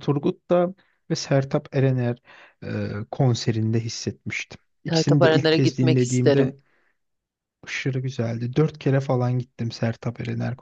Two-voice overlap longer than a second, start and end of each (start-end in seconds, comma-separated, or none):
4.8-6.5